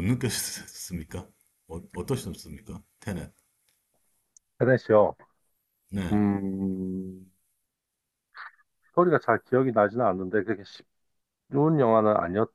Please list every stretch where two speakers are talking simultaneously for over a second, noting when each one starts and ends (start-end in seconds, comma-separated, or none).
none